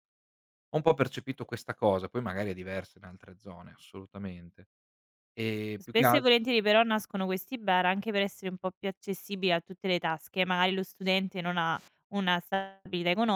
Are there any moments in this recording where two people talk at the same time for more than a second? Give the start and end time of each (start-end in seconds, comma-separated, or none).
none